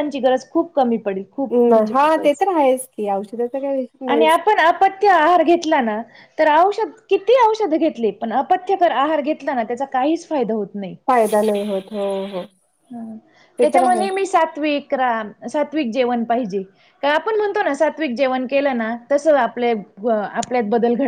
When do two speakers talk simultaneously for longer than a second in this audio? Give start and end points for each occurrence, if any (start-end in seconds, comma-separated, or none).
none